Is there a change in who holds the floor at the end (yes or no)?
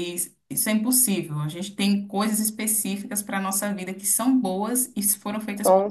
yes